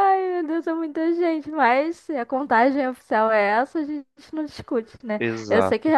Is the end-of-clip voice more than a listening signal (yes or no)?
no